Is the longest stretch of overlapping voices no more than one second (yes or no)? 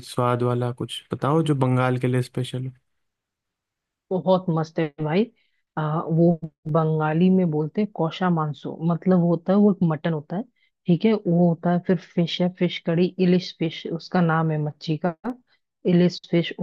yes